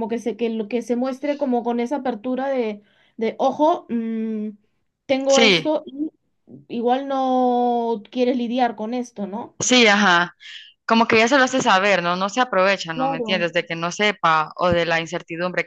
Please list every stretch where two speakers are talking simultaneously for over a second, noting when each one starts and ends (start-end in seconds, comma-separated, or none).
none